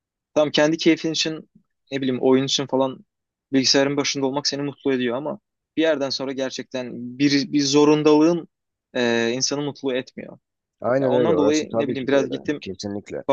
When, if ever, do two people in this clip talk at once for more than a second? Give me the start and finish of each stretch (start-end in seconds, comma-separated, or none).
11.0-12.6